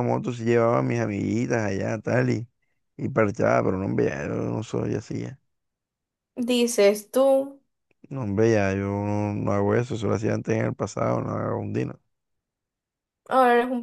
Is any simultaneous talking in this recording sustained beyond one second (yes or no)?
no